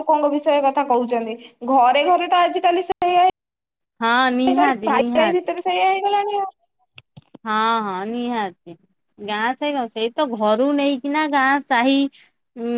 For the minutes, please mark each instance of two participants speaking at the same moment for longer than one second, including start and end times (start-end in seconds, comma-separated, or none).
none